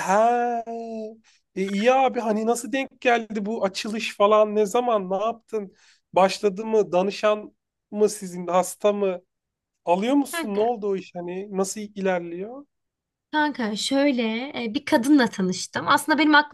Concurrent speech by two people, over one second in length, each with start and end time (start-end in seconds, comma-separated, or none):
none